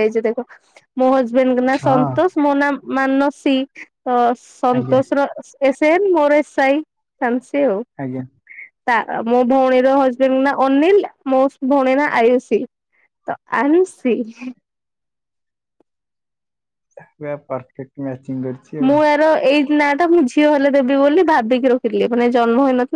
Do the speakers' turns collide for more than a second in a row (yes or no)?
no